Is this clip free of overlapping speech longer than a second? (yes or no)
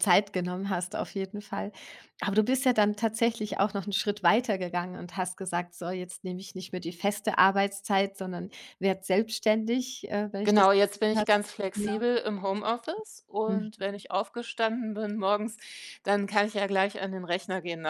no